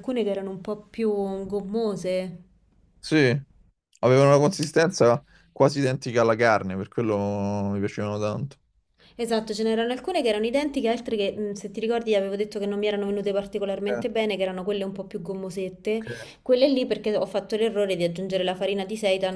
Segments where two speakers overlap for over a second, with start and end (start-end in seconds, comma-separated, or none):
none